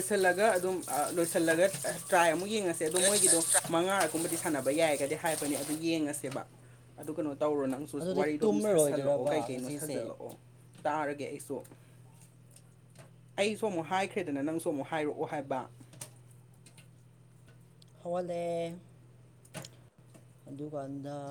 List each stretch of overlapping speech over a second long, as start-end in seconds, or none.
8.0-10.0